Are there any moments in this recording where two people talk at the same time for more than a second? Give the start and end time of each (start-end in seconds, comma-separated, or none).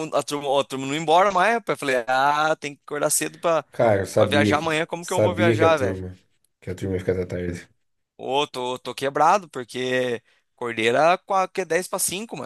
4.2-6.0